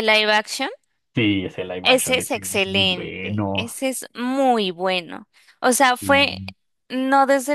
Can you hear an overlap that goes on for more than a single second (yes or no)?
yes